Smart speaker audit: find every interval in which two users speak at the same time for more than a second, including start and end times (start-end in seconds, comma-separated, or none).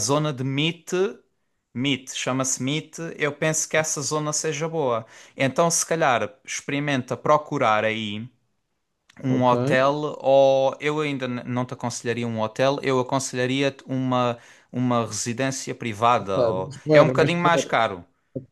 16.2-17.8